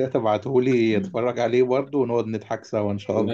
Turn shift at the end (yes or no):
yes